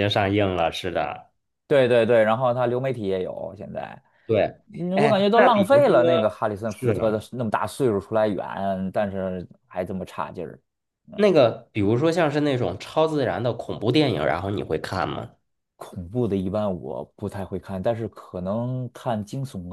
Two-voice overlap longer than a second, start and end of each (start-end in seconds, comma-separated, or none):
4.9-7.2